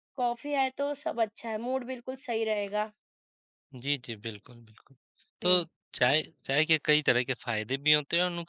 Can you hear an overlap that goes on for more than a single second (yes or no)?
no